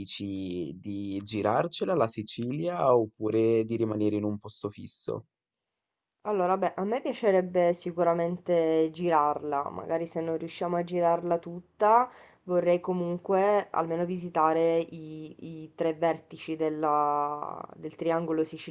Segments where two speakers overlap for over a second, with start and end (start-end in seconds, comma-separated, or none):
none